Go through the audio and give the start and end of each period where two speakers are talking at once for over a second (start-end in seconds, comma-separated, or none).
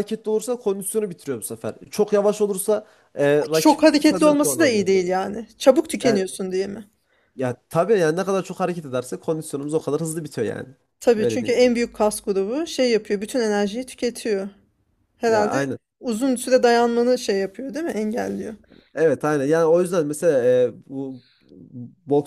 3.5-4.9